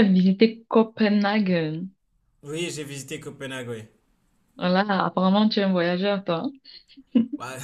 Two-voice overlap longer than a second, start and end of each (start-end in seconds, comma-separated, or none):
none